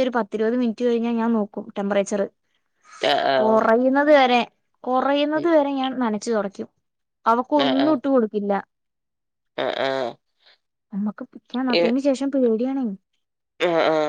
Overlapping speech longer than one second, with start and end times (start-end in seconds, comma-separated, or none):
none